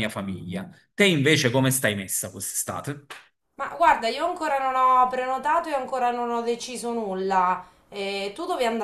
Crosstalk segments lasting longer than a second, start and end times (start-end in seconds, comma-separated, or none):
none